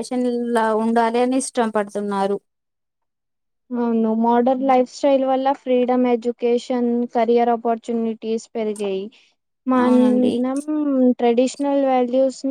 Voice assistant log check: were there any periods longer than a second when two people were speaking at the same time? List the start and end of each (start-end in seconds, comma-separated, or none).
none